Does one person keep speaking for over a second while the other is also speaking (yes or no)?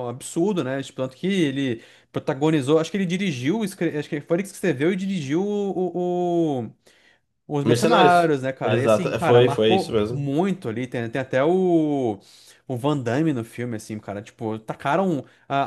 yes